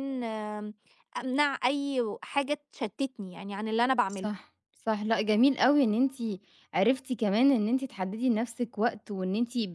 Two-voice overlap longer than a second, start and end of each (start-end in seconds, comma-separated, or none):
none